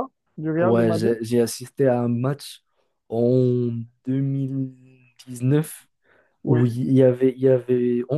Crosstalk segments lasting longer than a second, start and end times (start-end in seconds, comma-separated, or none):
none